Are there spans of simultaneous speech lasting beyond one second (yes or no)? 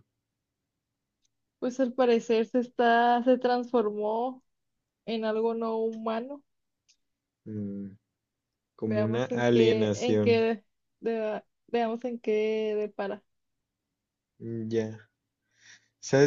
yes